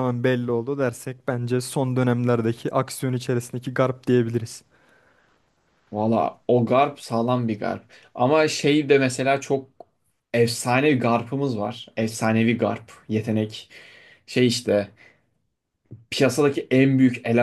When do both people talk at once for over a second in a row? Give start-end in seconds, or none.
none